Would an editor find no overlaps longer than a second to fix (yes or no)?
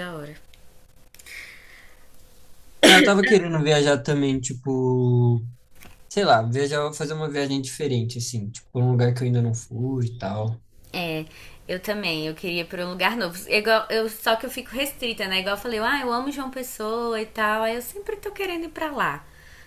yes